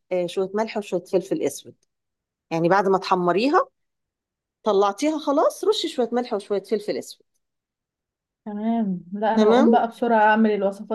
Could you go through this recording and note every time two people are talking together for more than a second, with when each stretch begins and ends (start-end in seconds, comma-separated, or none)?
none